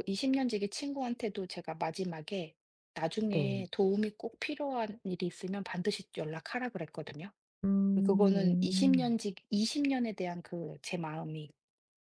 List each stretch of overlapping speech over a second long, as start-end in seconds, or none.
8.0-9.2